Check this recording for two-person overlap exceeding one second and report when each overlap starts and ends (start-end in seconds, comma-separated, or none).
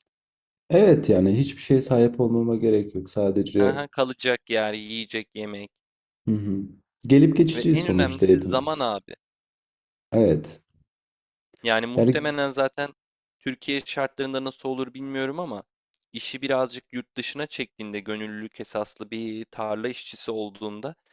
7.5-8.8